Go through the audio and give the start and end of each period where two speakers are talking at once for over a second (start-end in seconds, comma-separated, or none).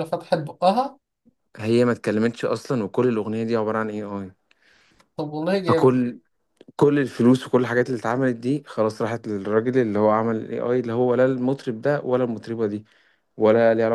none